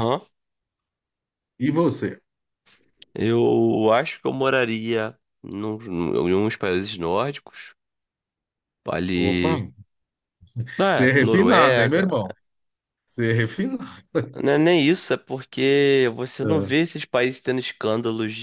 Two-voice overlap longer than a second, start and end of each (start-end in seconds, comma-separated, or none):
10.9-12.1